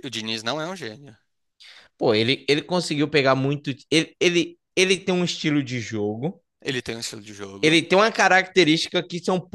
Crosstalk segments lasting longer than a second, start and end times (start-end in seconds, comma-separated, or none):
none